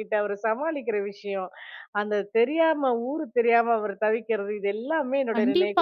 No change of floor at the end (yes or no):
no